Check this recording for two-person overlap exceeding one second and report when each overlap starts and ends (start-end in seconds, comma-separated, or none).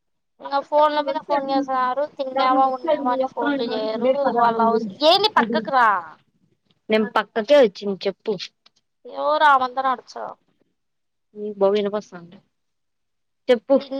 2.4-4.8